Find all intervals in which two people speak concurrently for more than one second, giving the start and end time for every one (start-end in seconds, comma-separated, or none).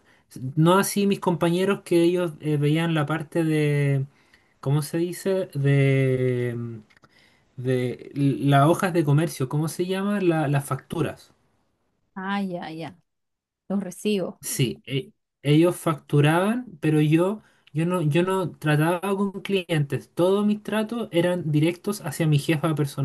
none